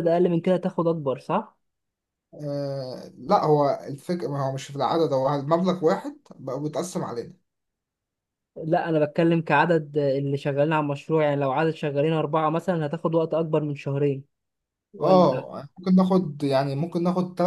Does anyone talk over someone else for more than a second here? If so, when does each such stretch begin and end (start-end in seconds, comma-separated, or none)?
none